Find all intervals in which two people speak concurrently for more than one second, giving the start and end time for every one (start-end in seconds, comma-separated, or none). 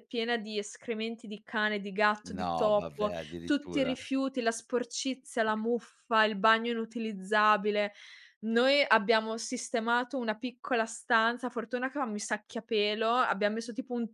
2.3-4.0